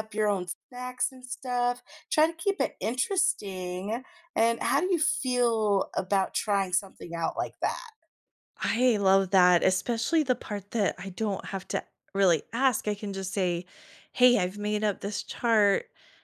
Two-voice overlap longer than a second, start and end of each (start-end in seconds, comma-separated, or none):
none